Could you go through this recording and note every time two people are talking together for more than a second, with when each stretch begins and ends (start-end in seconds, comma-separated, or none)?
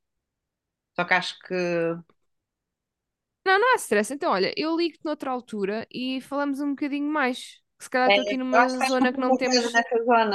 8.1-9.8